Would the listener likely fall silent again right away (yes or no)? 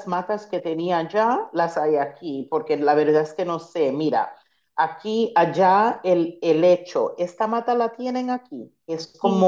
yes